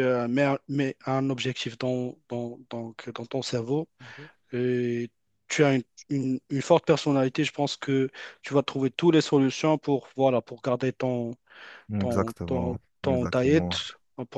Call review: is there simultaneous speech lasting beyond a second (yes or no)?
yes